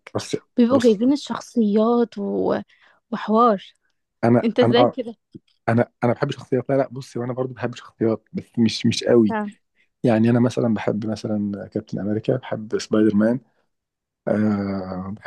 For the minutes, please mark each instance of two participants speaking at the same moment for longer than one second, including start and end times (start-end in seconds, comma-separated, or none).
none